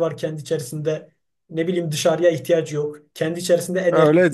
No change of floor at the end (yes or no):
no